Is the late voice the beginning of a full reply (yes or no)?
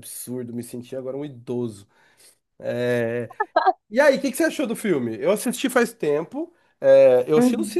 no